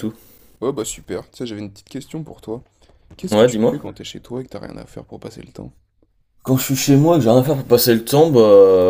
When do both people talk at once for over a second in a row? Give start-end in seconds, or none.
none